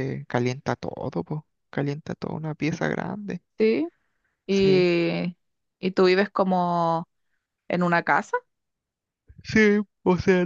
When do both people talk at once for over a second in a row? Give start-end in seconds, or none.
none